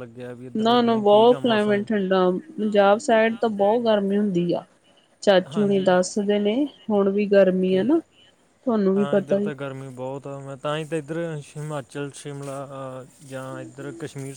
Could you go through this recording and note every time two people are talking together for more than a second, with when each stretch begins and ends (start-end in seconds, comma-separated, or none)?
0.6-1.9